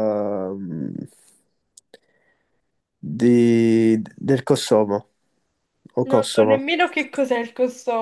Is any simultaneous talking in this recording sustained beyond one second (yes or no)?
no